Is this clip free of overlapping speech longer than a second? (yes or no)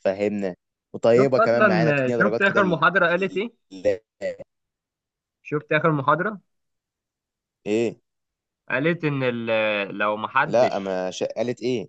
no